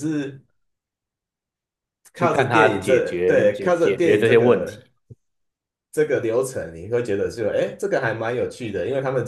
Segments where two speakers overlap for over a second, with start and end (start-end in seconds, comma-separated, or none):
2.2-4.9